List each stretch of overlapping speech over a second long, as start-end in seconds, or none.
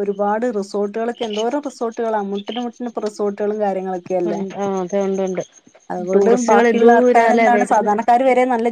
6.1-7.9